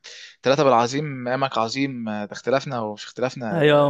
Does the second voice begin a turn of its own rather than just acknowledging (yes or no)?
yes